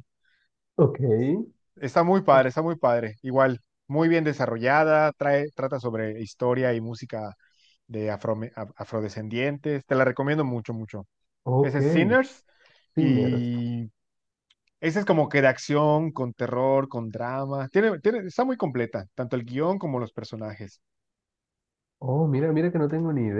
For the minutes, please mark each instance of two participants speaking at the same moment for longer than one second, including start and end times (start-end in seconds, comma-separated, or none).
none